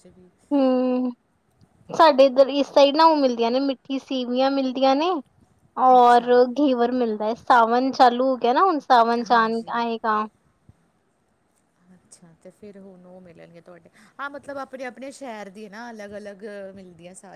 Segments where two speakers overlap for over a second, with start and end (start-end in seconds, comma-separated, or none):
none